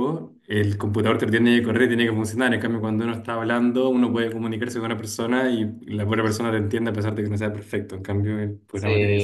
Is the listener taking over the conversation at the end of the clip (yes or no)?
yes